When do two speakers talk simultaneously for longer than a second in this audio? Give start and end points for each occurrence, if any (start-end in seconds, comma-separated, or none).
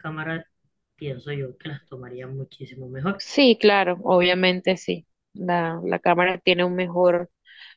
none